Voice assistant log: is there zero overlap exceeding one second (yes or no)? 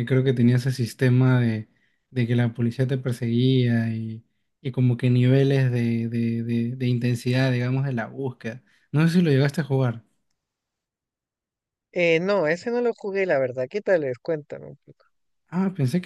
yes